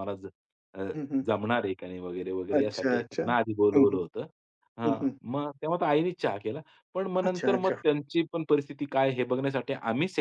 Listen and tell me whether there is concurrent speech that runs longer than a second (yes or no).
yes